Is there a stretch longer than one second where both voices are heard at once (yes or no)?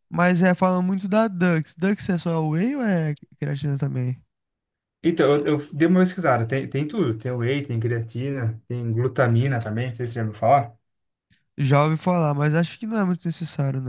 no